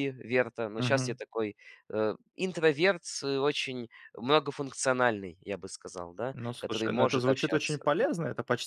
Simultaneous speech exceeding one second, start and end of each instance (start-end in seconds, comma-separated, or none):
6.3-7.8